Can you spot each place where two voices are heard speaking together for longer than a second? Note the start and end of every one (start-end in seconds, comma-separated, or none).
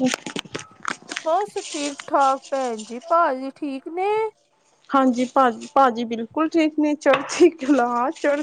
none